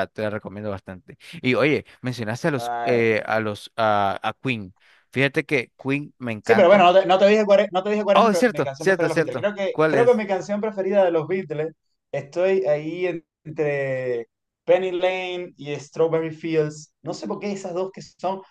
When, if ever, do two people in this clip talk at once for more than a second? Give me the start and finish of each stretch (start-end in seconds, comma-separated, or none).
8.1-10.2